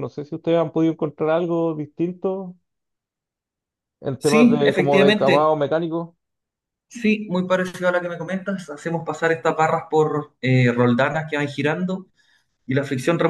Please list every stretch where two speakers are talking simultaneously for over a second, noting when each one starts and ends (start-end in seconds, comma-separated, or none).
4.2-5.5